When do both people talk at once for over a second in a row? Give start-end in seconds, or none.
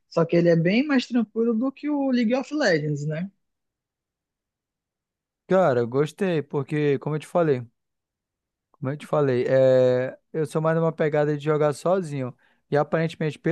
none